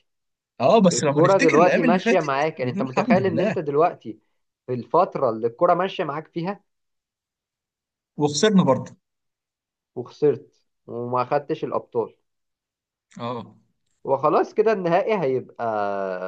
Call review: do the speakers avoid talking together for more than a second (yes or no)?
no